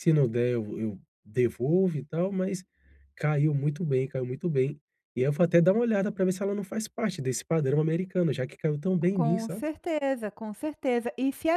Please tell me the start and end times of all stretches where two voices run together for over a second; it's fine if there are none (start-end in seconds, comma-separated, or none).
none